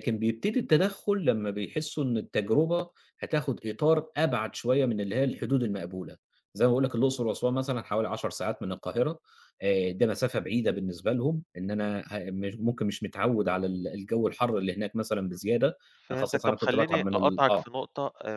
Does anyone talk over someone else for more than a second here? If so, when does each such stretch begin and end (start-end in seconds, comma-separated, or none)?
16.1-17.6